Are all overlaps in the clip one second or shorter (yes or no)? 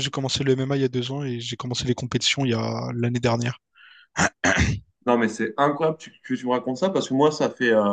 yes